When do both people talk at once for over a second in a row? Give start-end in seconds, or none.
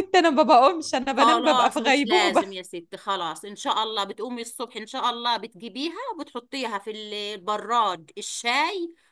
1.1-2.5